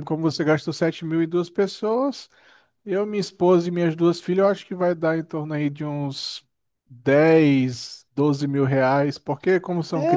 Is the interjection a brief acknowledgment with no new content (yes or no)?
no